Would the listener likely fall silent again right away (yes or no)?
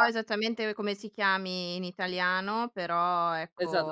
no